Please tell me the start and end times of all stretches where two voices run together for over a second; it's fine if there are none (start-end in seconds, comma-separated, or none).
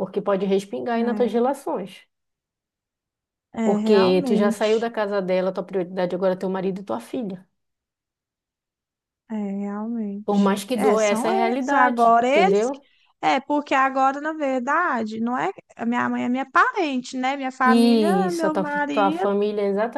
3.7-4.9, 10.3-12.8, 17.6-19.3